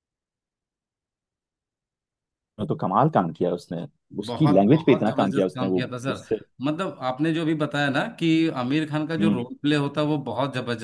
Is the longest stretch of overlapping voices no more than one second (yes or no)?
no